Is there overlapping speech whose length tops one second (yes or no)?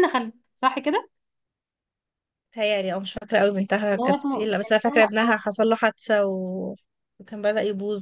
yes